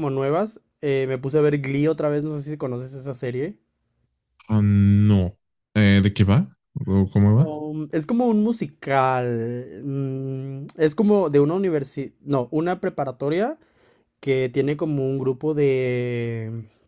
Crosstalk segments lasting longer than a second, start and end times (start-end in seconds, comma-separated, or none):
none